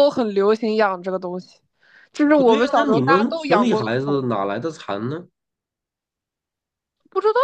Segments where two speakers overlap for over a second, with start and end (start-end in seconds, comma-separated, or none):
2.4-4.2